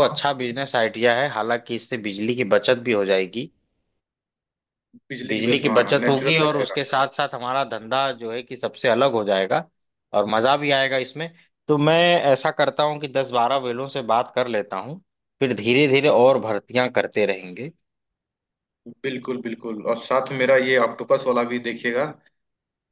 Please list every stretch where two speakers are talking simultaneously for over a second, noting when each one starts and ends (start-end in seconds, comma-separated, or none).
5.2-6.8